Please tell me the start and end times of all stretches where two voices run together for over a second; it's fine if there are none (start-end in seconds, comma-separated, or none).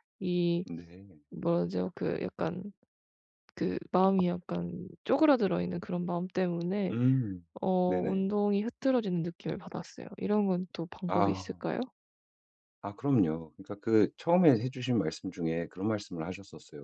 none